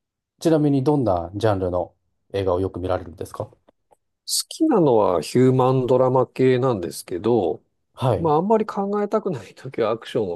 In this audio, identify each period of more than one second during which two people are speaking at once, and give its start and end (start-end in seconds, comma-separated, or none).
none